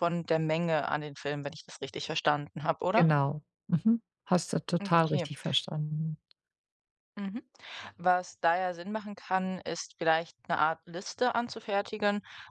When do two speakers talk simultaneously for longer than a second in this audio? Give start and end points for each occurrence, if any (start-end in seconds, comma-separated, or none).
none